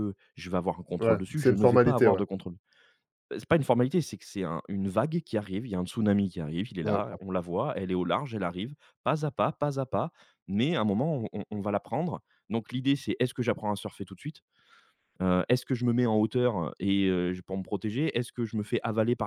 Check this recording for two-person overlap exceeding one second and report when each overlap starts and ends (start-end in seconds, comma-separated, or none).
1.0-2.2